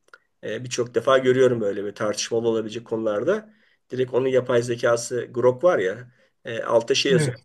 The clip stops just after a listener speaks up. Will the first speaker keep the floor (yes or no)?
yes